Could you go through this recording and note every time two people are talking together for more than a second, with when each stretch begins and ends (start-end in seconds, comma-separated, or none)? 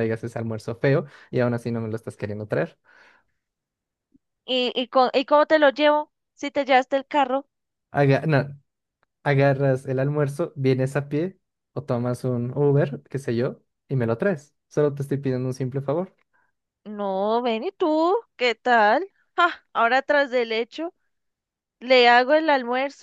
none